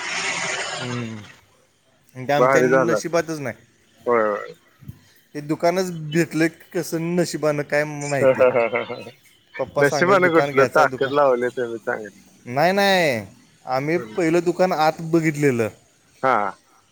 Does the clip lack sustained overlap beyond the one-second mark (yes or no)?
no